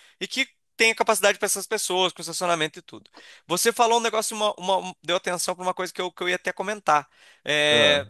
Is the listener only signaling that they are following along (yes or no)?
yes